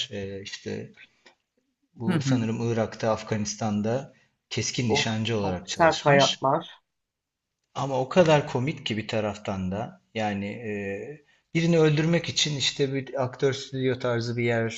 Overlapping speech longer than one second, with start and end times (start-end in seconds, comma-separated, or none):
4.9-6.5